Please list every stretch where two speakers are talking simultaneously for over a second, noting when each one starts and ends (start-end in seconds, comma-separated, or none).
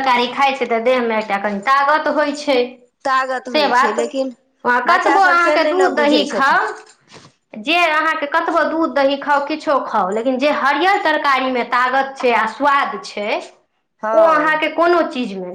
4.9-6.6